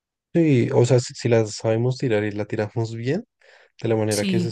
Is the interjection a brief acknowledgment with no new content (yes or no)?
yes